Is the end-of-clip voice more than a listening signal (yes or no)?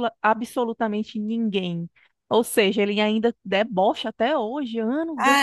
yes